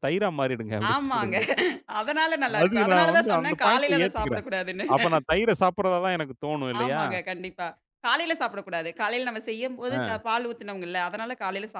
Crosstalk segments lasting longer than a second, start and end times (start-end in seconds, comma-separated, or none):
2.6-4.5